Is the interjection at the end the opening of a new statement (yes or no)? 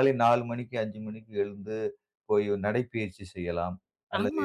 yes